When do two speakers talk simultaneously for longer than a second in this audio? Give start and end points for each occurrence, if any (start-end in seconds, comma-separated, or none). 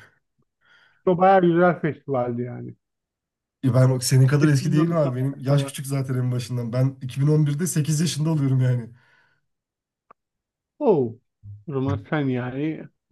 4.4-5.8